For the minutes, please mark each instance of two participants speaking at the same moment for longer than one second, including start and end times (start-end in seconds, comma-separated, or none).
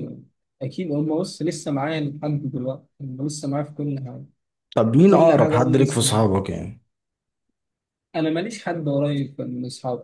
5.0-6.3